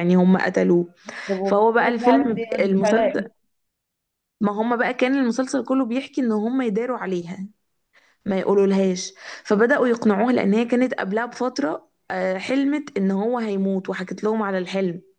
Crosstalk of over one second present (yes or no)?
yes